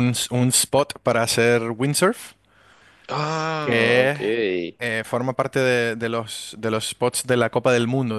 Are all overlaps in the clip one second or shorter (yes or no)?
yes